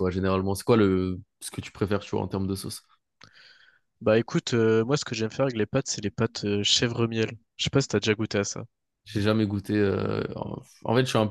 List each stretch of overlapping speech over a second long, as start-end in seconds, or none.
none